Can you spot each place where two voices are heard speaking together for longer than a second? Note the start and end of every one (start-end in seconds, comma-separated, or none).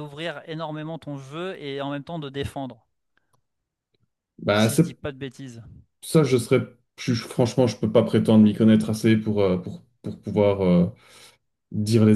none